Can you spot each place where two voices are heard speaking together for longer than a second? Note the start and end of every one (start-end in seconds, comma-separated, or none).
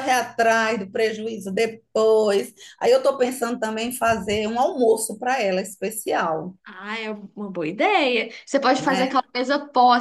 none